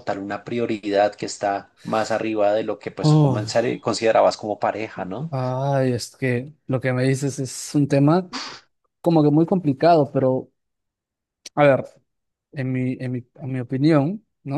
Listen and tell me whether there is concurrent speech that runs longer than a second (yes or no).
no